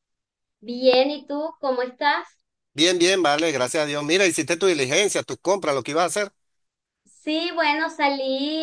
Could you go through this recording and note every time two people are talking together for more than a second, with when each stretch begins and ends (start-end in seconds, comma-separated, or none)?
none